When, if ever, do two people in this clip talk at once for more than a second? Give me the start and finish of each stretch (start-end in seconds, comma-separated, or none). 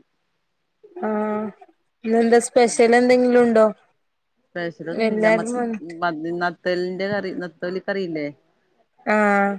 none